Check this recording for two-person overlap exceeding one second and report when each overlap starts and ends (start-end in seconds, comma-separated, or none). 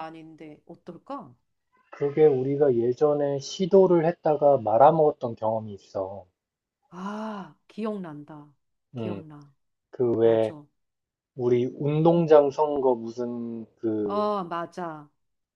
none